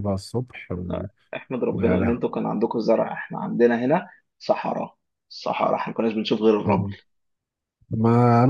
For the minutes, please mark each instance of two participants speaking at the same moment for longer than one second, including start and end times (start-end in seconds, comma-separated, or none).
none